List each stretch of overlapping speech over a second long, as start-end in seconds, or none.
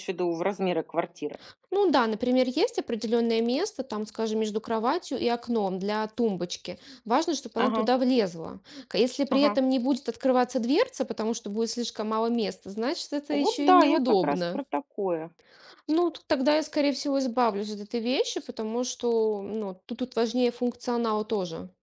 13.3-14.6